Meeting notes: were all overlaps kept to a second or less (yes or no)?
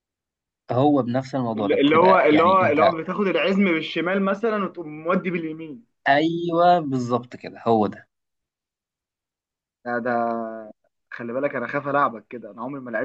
no